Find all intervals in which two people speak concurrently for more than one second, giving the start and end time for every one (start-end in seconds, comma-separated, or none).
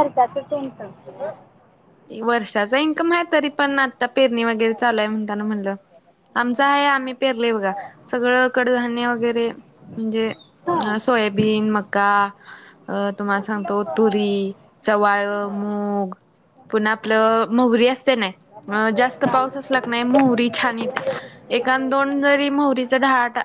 none